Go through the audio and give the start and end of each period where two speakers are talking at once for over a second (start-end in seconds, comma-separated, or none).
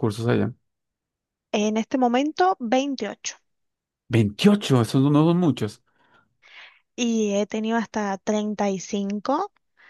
none